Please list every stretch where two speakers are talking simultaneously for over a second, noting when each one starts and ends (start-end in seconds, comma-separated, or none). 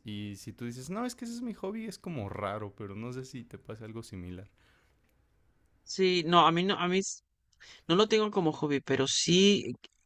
none